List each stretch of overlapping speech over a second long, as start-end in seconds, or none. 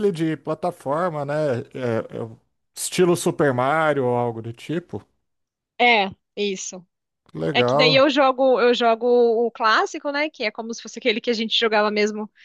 none